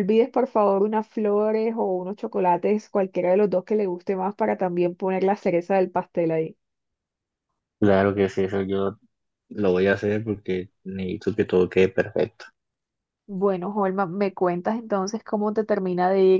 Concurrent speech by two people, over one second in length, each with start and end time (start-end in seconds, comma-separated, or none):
none